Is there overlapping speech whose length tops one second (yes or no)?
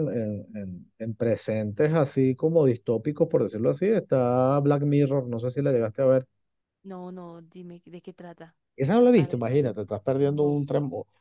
yes